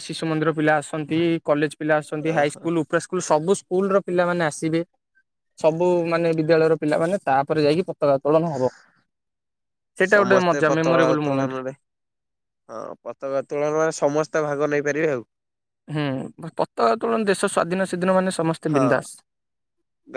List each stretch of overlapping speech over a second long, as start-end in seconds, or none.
10.1-11.6